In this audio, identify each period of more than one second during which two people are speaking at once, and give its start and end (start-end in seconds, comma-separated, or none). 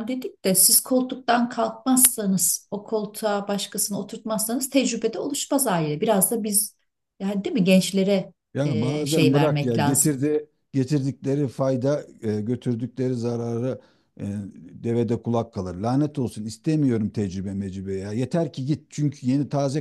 8.6-10.2